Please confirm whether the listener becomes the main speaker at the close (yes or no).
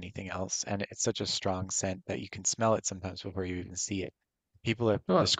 no